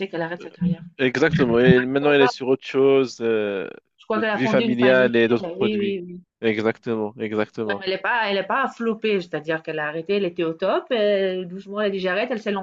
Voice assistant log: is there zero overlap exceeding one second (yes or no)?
no